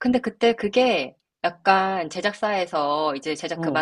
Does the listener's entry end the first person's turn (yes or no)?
no